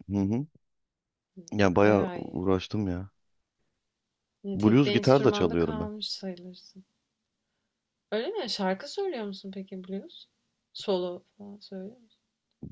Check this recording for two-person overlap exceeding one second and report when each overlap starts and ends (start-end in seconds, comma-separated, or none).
4.5-5.9